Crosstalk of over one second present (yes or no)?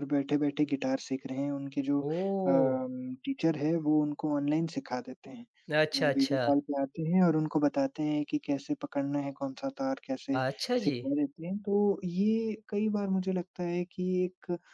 no